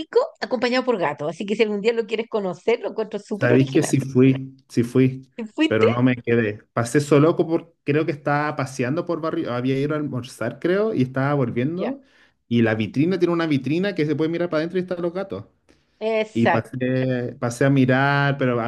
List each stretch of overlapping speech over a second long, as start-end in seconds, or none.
none